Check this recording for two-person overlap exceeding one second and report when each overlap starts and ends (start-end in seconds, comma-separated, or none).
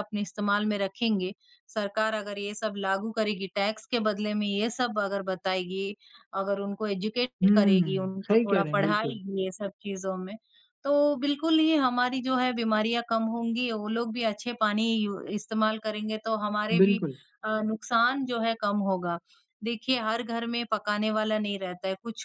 7.4-9.2